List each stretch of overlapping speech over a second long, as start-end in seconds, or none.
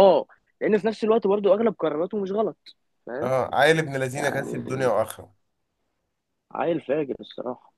none